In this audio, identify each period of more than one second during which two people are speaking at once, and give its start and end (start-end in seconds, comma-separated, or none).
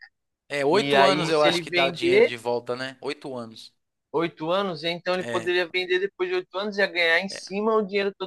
0.7-2.3